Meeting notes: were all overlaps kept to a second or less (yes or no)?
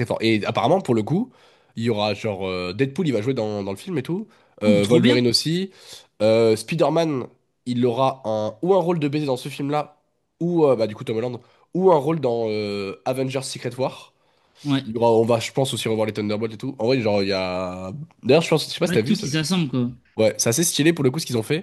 yes